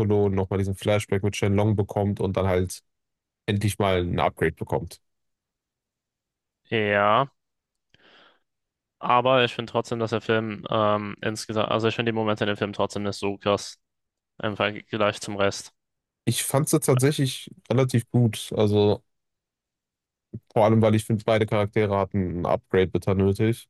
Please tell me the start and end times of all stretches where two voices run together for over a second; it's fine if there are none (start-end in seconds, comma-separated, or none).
none